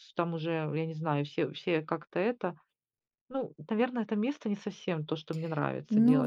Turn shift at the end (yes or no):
yes